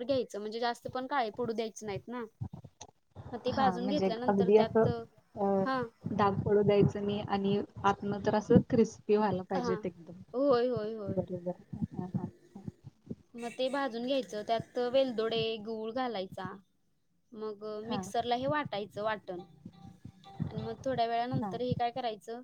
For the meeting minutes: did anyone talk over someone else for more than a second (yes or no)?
no